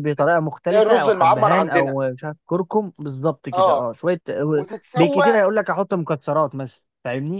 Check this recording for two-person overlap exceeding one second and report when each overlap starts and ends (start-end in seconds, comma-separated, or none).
0.7-2.0